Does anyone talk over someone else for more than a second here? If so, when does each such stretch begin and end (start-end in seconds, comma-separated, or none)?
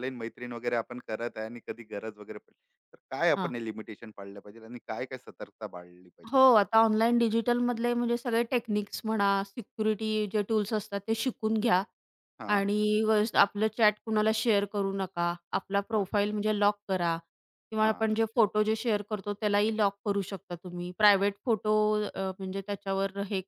none